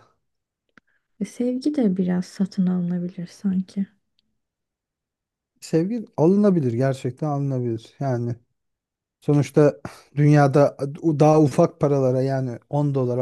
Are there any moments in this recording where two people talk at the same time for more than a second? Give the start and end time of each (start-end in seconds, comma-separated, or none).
none